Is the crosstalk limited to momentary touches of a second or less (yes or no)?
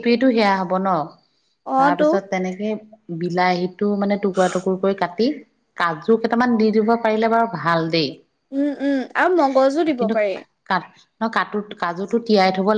yes